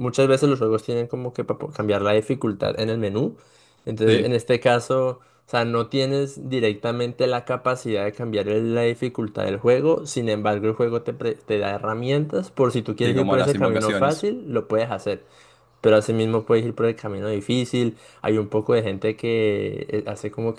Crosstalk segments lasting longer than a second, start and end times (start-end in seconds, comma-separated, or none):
13.0-14.3